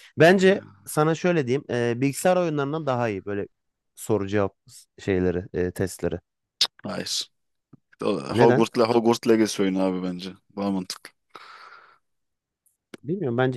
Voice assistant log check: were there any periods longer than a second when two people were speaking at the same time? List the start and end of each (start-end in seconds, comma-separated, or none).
none